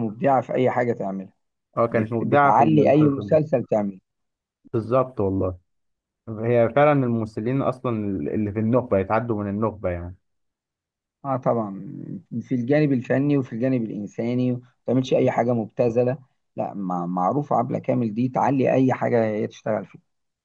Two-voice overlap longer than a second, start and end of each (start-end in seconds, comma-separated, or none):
1.9-3.4